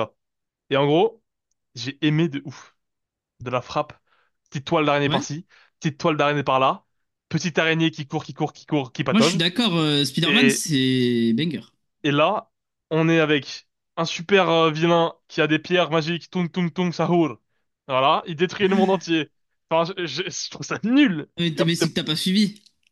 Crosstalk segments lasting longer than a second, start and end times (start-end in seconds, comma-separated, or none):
none